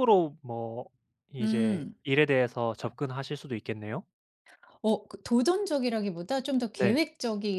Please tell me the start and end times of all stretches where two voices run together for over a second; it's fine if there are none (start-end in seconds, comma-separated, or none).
none